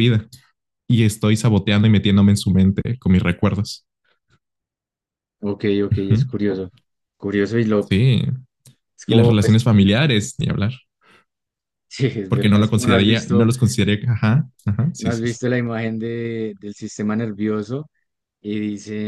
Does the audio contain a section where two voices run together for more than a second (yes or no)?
yes